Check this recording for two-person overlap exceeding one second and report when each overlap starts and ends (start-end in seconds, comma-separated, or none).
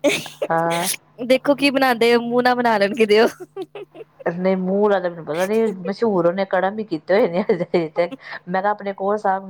none